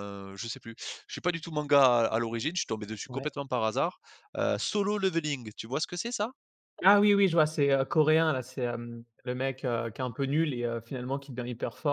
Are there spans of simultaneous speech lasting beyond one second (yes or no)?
no